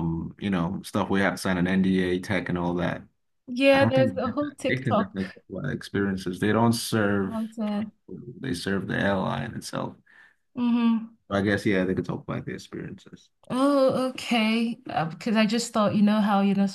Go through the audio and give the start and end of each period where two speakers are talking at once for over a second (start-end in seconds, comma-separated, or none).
3.7-5.2